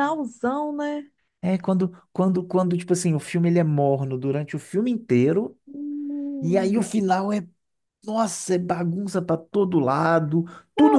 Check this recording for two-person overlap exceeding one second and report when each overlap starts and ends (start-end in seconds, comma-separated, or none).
none